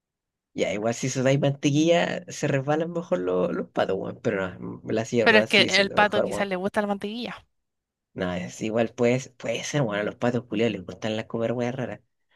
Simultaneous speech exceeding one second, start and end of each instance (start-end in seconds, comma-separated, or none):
5.2-6.5